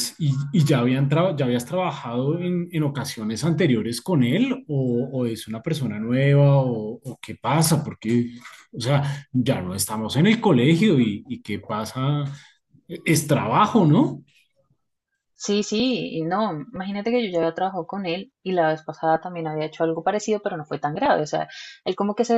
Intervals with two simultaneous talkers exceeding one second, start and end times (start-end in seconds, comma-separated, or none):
none